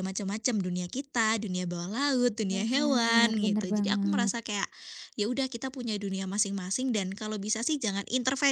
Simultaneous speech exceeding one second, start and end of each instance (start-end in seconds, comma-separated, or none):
2.5-4.3